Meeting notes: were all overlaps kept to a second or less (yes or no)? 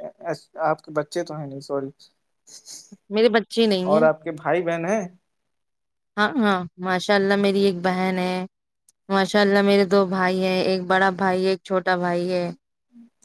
yes